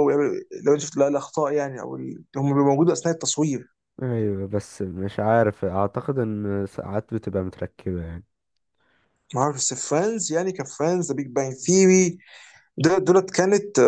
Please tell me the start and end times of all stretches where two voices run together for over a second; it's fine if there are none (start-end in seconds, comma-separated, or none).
none